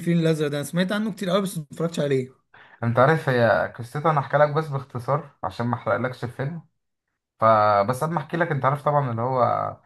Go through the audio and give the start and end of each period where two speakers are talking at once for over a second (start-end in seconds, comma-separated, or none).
none